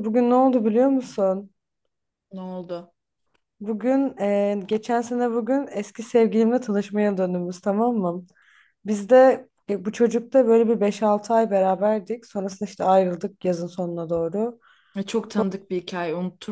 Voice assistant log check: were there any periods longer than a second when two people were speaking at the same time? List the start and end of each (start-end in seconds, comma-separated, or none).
none